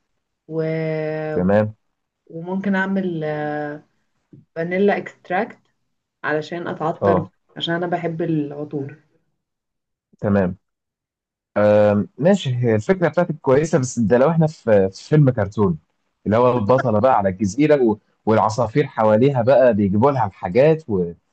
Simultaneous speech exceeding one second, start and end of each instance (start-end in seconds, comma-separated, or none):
none